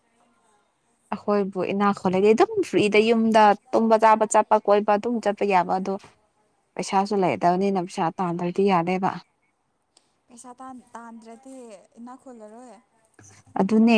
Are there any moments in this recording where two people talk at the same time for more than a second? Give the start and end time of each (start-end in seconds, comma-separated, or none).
none